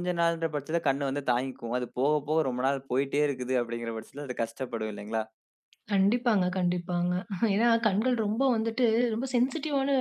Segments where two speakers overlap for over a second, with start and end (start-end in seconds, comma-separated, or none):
none